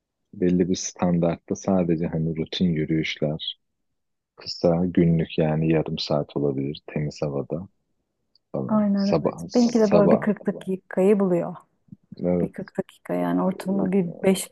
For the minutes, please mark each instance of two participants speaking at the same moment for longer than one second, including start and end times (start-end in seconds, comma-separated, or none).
8.7-10.3